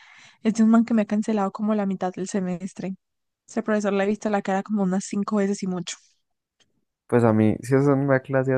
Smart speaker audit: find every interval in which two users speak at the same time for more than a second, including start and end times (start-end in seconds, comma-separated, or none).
none